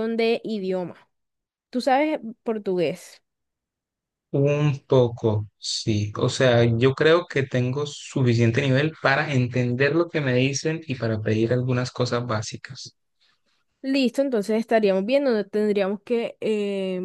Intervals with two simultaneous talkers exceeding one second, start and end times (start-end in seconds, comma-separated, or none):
none